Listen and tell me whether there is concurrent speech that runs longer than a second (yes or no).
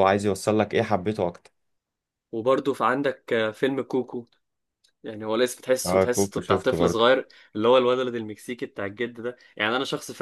yes